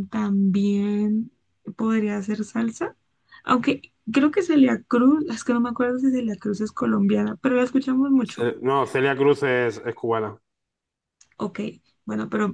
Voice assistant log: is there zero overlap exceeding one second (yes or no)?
yes